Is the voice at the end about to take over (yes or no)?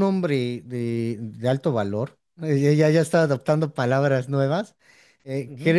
no